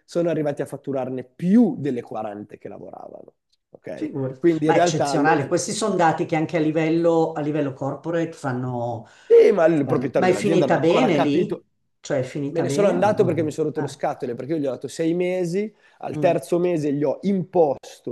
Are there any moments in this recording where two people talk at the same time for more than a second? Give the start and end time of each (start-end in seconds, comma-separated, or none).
3.9-5.4, 9.8-11.6, 12.5-14.0